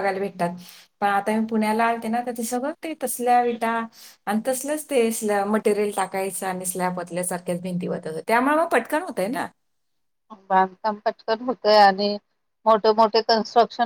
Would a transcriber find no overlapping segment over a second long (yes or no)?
yes